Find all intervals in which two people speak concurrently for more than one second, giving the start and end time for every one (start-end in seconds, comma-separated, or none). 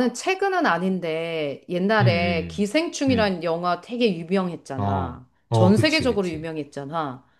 4.8-6.5